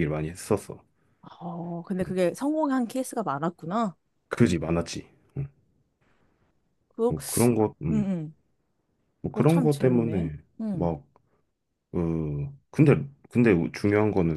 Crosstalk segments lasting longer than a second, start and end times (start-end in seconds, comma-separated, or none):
9.3-10.9